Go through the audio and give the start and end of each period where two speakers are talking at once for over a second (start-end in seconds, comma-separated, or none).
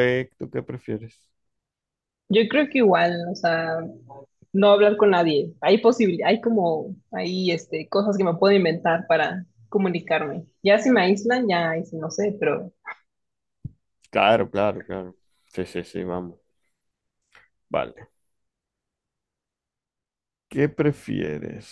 none